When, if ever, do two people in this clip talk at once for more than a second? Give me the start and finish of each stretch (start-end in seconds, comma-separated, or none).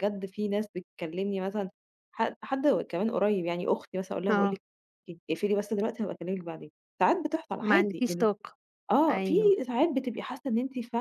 none